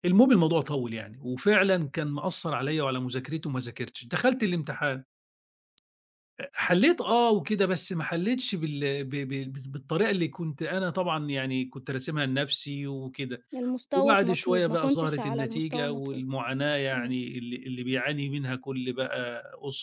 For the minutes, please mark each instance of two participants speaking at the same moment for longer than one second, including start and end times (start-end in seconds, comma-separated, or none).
13.9-16.2